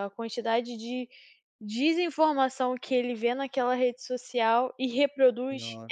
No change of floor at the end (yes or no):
no